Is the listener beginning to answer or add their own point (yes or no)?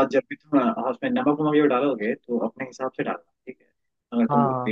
no